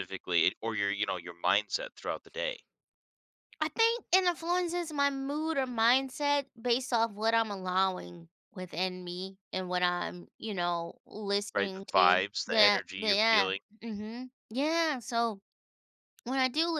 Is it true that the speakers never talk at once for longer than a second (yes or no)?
no